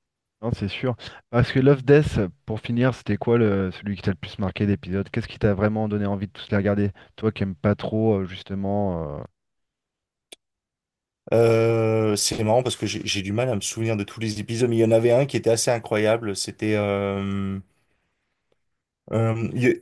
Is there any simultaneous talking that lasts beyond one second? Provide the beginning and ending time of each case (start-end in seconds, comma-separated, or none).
none